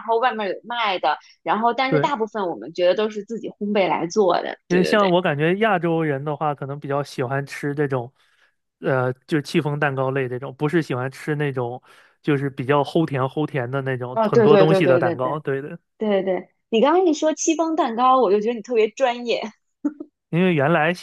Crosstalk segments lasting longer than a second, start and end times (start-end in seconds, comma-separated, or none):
14.1-15.4